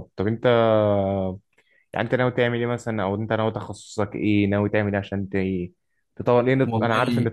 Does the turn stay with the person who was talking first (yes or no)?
yes